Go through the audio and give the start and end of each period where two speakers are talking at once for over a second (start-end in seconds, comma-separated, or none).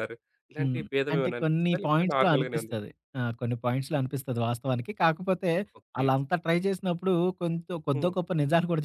0.6-2.8